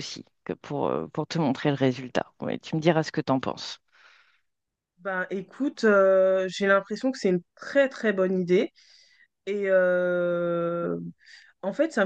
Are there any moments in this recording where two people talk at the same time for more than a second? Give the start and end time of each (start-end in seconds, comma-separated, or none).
none